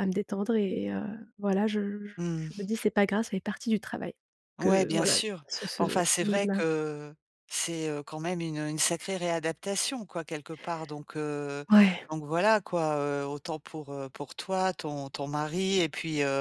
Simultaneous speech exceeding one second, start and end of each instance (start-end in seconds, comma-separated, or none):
4.6-6.6